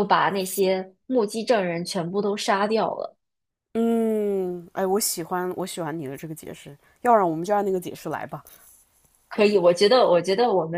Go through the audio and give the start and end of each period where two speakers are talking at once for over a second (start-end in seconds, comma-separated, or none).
none